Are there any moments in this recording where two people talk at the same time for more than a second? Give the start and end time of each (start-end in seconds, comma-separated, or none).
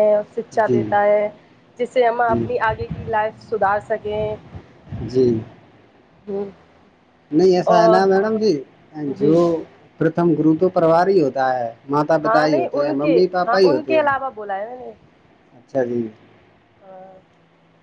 12.2-14.1